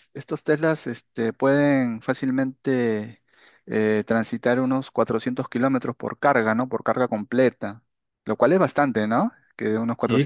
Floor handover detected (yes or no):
yes